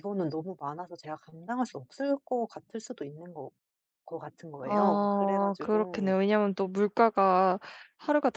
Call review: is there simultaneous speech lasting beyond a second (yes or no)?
yes